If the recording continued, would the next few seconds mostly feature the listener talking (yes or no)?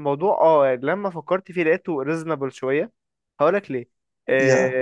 no